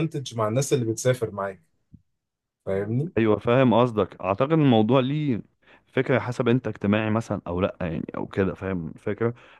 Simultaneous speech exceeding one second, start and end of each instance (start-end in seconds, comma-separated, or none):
none